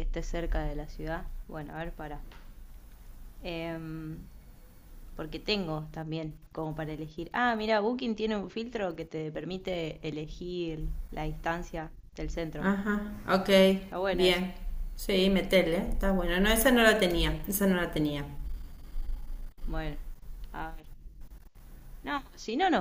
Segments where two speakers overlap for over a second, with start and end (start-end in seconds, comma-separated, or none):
none